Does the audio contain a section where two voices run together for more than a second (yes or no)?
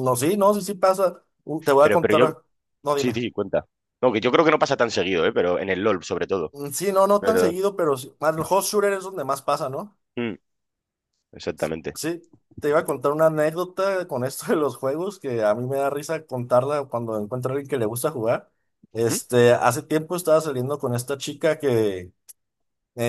no